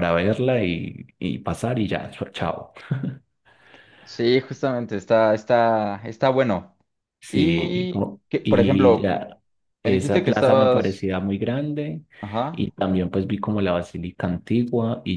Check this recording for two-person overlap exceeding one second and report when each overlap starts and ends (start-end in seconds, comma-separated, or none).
7.3-9.1, 9.8-11.1